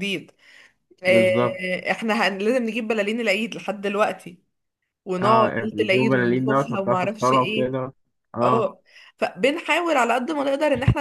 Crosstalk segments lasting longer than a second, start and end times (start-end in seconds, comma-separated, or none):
5.2-7.8